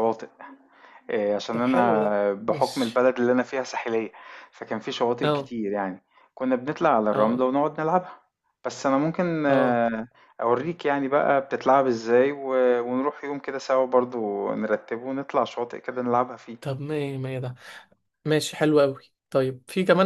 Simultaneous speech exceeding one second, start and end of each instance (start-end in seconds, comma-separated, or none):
1.5-3.1